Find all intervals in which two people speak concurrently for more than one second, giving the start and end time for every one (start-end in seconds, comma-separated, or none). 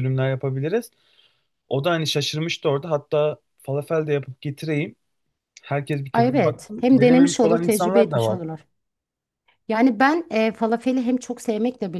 6.1-8.4